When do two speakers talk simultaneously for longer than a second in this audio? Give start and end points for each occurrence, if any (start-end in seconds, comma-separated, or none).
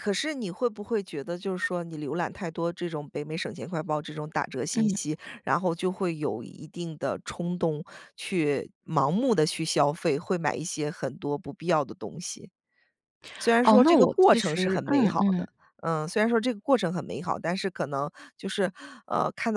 13.6-15.5